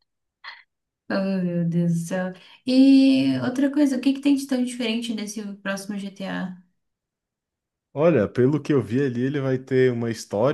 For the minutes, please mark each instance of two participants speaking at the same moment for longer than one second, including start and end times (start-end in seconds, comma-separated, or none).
none